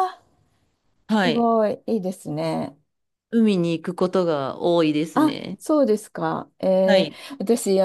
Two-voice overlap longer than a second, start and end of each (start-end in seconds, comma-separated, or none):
none